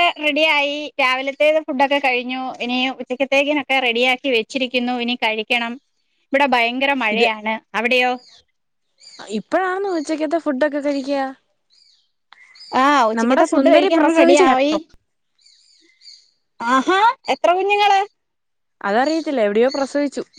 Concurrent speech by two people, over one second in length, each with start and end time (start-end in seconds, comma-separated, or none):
13.2-14.5